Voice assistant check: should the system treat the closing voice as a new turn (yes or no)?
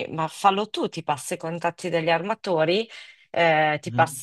no